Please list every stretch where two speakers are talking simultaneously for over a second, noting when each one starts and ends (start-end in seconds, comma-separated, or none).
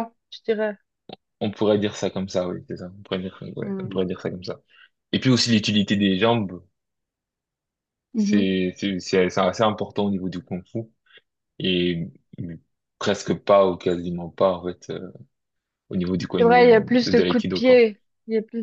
16.4-17.8